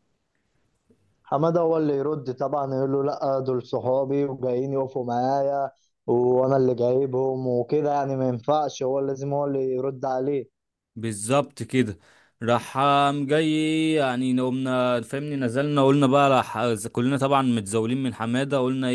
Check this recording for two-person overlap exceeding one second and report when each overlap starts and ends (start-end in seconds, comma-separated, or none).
none